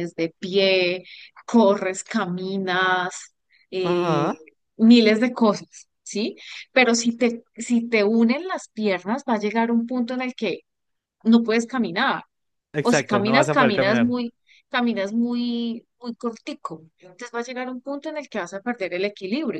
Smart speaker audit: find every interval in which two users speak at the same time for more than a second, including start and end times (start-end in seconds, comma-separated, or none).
12.8-14.1